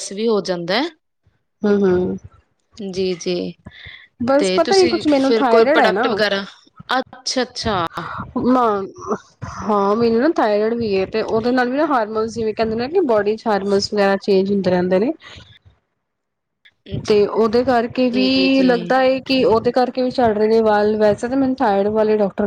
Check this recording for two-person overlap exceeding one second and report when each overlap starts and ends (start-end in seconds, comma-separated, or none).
4.4-6.1